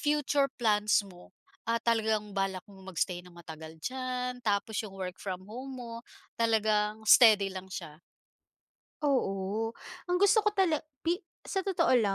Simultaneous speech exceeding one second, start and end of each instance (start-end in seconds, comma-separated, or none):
none